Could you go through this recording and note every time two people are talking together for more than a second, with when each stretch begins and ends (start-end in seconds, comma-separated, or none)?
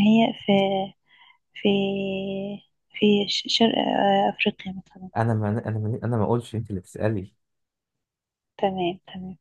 none